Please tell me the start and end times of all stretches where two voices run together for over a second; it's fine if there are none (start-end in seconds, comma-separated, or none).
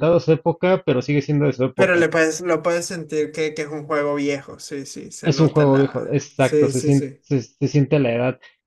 5.2-7.2